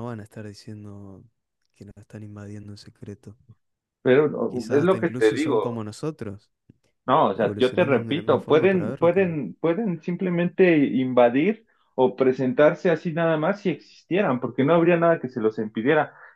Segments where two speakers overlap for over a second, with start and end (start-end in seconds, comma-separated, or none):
4.5-5.8, 7.3-9.4